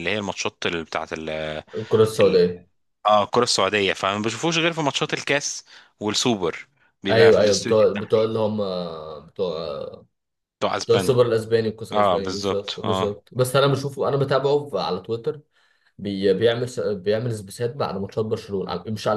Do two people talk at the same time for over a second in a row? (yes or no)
yes